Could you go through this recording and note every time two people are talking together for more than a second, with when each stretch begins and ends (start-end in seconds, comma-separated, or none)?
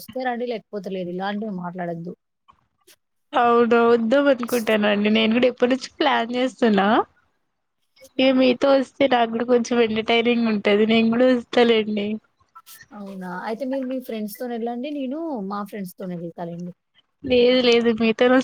none